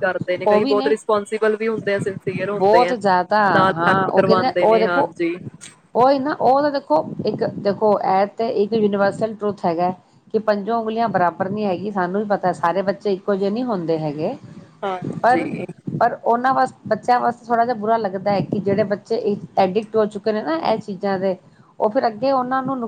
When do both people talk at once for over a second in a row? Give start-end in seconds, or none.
3.6-5.1